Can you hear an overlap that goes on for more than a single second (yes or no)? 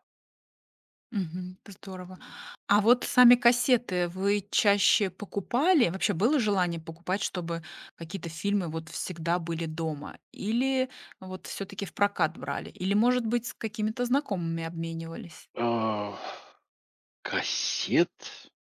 no